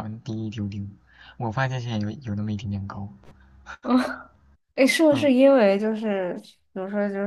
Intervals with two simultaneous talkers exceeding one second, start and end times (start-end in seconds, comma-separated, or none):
none